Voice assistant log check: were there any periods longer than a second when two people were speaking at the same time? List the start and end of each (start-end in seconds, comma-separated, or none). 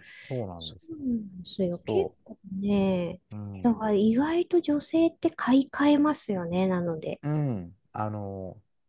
none